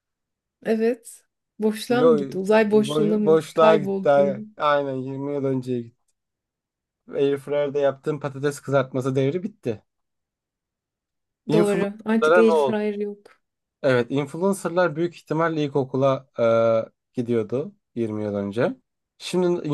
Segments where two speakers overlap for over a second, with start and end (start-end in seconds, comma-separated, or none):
2.9-4.1, 11.5-12.8